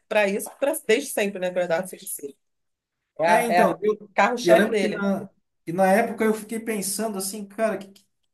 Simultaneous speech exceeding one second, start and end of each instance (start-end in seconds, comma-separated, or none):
3.2-5.1